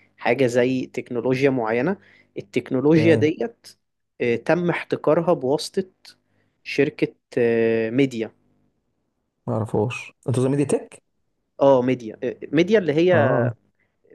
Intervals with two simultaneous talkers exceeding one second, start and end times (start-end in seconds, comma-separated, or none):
none